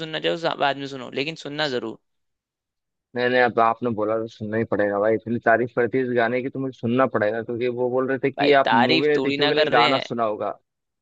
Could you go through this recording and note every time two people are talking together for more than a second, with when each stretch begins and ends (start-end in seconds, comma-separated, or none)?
8.4-10.0